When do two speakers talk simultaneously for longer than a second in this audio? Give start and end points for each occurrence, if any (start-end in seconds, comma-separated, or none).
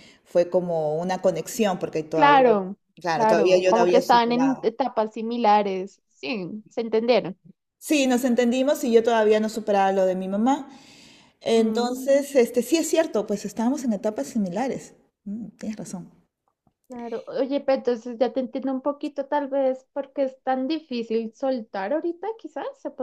3.1-4.7